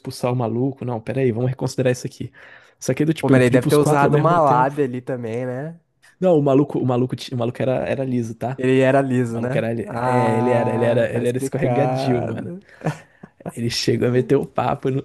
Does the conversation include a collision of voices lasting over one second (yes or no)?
yes